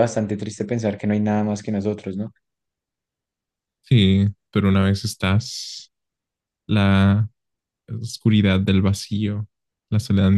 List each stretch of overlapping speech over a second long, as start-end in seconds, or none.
none